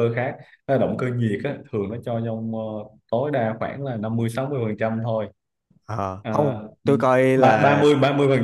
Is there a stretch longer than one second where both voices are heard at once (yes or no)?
no